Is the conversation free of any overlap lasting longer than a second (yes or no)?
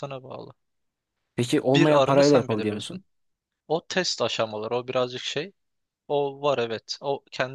no